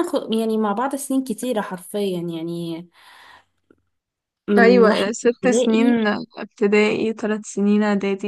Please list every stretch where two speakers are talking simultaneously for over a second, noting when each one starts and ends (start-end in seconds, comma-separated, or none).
4.6-6.0